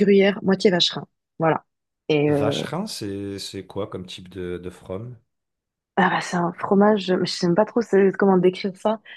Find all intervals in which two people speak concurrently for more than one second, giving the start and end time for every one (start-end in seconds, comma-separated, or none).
none